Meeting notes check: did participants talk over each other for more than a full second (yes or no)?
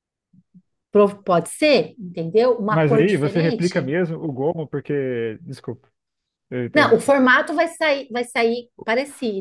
yes